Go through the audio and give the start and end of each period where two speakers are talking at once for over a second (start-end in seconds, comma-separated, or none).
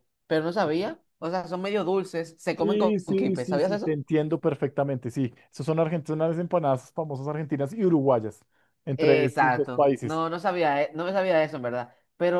2.6-4.0, 9.0-10.2